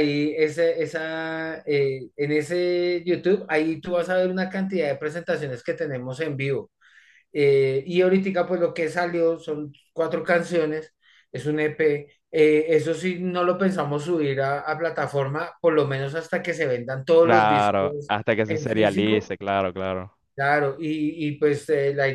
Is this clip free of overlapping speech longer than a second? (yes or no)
no